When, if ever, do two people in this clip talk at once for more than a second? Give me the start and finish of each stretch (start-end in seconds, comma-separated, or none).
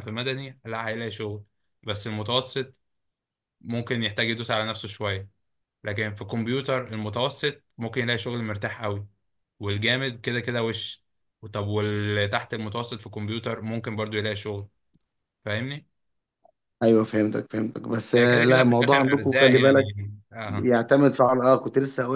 18.2-19.8